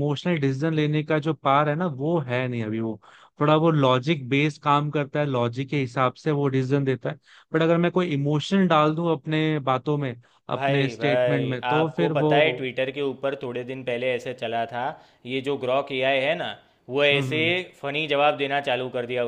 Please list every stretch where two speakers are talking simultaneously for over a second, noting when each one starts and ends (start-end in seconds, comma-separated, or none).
10.5-12.7